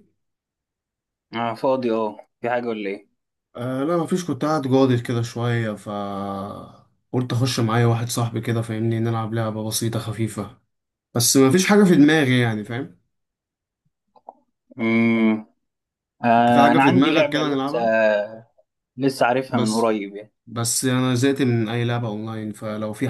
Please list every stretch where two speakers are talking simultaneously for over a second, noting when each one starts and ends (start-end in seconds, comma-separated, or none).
16.4-17.8